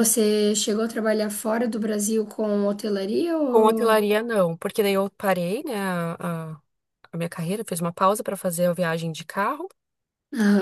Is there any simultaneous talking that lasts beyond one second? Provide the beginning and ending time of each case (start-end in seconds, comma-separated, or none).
none